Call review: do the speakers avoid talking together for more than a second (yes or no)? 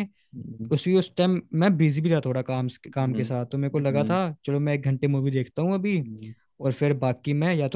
no